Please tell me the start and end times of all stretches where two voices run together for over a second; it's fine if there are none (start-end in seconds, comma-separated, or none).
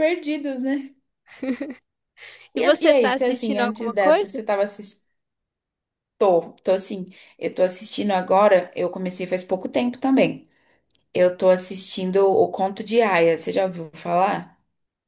2.6-4.4